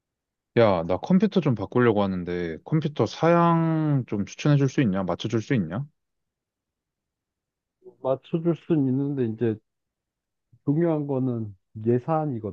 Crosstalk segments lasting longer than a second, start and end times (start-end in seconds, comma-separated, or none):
none